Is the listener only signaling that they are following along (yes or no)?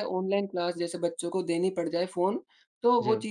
yes